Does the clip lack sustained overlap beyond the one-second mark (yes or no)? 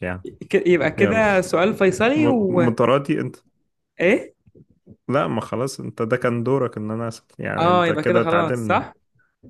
no